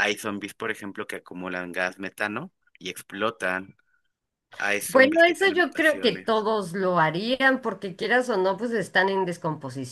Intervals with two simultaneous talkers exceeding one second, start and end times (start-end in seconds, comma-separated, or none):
4.9-6.5